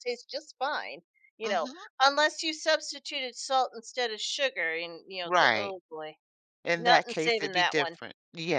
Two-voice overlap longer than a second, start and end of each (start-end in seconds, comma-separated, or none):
6.8-8.0